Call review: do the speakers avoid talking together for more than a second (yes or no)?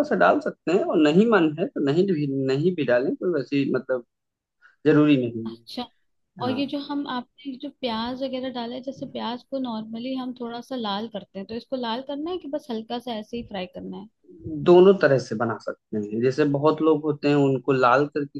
yes